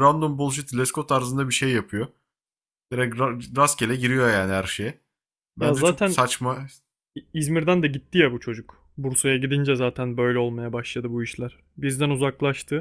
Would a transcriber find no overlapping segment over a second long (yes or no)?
yes